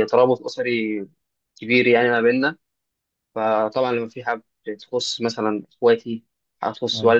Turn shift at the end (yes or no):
no